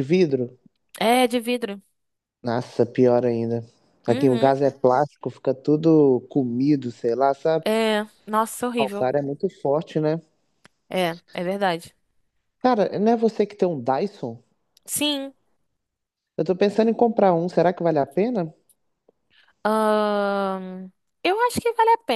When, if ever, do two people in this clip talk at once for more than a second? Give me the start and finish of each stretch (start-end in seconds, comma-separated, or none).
none